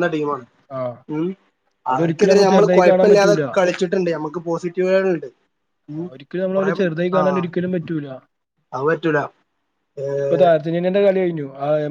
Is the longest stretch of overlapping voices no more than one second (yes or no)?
no